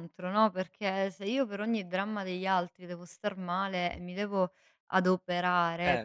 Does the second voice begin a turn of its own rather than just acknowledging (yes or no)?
no